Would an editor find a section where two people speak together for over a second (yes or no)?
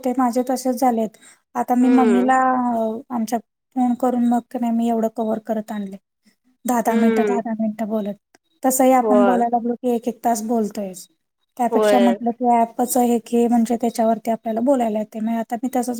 no